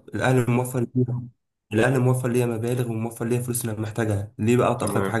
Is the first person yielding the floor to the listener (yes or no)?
no